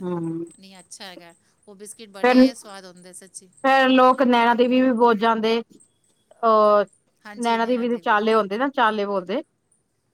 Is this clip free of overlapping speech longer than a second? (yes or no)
no